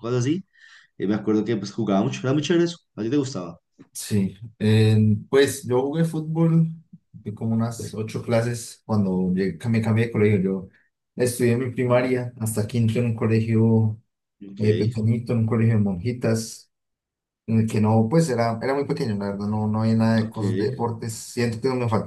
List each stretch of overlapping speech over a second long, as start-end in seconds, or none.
none